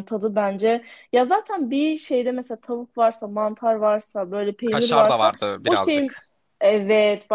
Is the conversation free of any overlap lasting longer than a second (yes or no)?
no